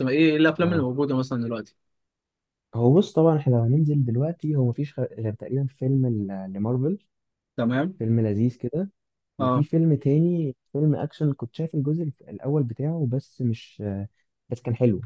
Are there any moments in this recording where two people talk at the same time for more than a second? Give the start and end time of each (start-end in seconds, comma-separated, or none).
none